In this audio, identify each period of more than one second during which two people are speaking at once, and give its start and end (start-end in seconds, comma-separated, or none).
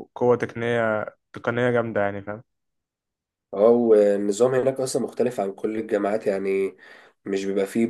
none